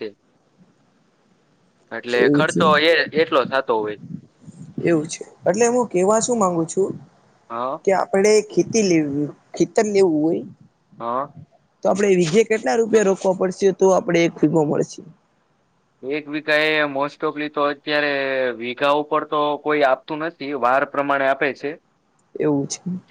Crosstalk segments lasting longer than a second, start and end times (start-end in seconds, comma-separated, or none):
none